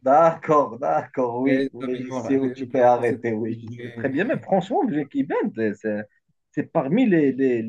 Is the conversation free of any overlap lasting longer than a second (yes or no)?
no